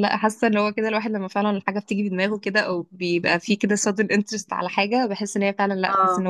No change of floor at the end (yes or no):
yes